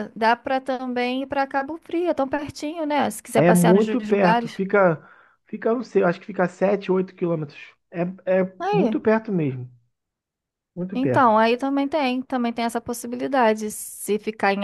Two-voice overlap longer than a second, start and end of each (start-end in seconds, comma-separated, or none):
3.4-4.6